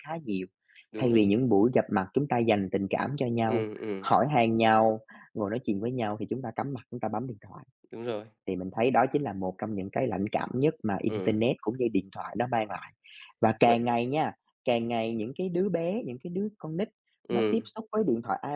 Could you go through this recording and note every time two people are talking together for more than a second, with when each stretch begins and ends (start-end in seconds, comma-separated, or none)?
none